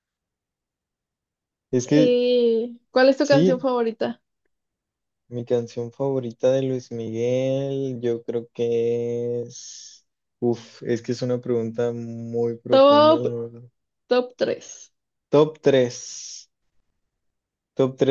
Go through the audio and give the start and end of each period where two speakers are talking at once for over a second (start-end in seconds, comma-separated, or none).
none